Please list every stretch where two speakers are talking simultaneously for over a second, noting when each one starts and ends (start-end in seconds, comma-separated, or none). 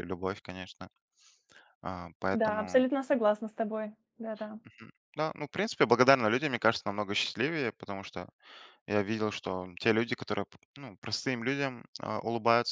none